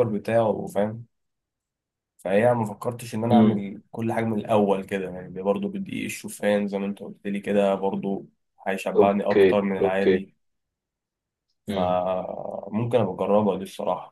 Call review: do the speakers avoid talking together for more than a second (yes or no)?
no